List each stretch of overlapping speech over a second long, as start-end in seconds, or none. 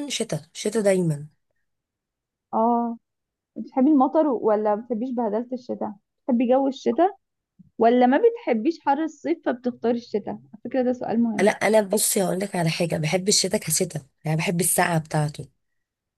none